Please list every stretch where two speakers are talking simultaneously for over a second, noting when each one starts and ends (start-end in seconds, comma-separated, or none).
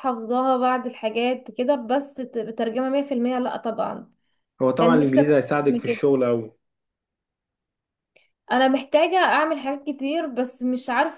4.8-6.0